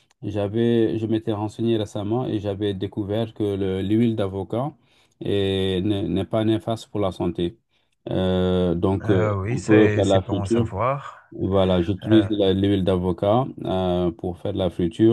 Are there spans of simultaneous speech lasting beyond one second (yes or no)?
yes